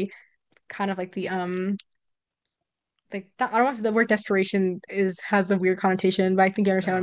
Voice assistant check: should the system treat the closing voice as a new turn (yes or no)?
no